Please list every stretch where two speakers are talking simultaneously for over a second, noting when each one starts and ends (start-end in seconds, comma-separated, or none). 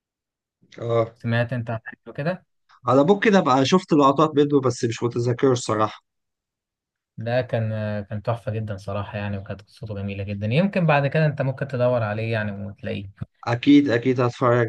none